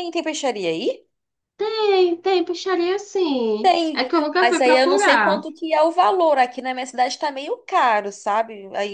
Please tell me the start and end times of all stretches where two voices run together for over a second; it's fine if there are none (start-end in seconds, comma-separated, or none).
3.6-5.4